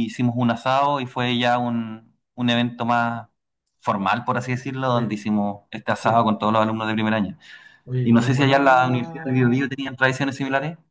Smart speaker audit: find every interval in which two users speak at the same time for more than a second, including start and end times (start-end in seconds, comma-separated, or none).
8.0-9.7